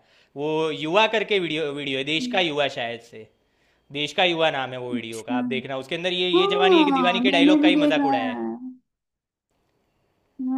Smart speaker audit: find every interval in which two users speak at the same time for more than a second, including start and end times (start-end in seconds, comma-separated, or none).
6.3-8.4